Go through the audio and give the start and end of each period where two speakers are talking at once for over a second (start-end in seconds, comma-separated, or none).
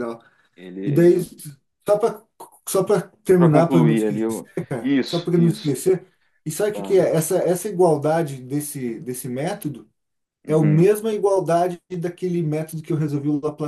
3.4-5.8